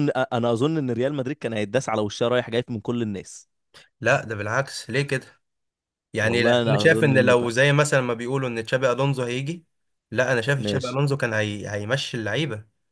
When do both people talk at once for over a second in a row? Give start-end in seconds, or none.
6.2-7.5